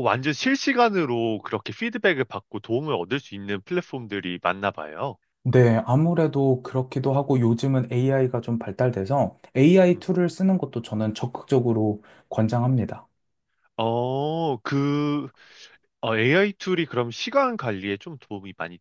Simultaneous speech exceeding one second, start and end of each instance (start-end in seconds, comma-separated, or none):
none